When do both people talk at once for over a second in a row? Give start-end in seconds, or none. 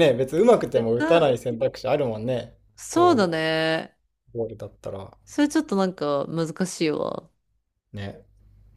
none